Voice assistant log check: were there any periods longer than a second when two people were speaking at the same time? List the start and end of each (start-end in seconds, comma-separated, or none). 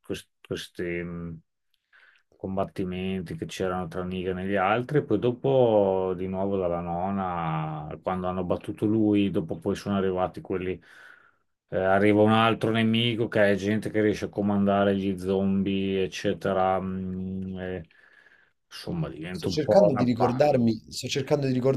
19.3-20.6